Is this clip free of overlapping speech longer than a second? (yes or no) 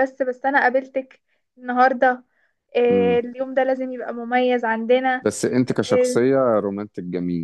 yes